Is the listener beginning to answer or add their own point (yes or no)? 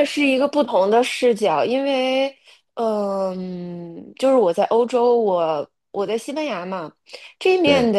no